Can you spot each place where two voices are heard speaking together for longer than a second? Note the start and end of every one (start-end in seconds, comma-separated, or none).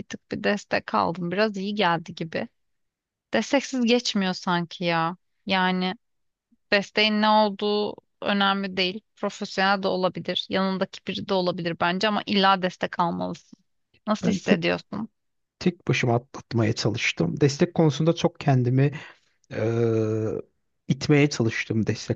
none